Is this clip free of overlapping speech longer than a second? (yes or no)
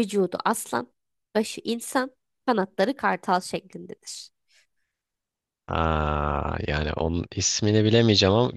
yes